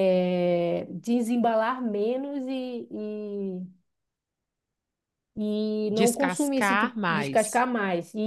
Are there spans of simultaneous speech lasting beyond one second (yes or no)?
yes